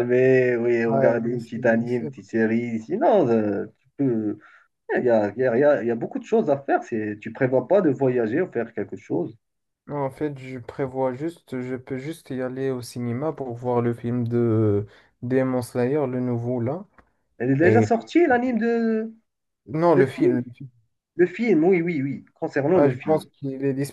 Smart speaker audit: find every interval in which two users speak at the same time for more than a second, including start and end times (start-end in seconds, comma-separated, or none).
0.9-2.1